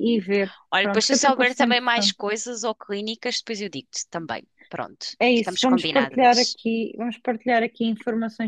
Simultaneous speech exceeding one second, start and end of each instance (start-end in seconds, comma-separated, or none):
0.7-2.1, 5.2-6.6